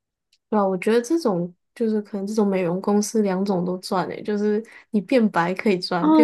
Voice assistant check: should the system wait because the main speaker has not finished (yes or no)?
no